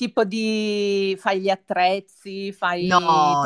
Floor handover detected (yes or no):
yes